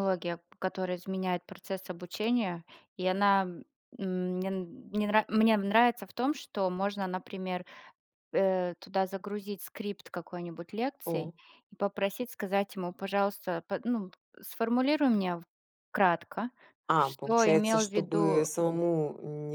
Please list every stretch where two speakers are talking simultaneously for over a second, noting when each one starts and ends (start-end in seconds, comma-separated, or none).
17.0-18.5